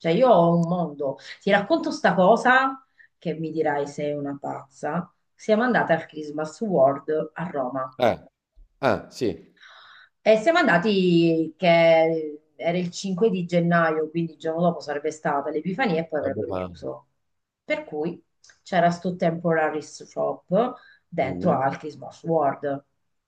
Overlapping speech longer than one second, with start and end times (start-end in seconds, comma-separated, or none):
none